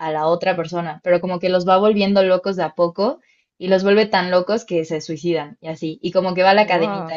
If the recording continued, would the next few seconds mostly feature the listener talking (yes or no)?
no